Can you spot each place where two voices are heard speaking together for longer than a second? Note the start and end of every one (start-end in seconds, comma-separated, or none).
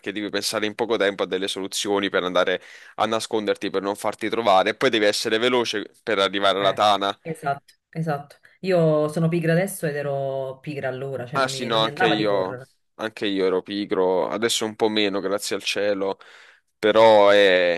11.3-12.6